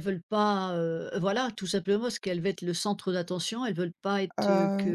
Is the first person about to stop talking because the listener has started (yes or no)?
no